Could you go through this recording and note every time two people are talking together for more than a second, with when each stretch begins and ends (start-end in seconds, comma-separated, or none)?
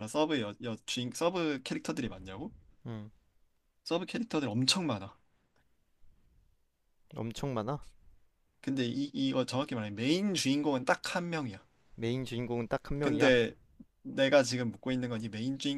none